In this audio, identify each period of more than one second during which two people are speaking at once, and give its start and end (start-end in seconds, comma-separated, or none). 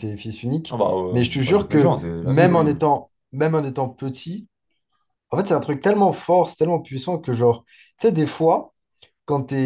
0.7-2.6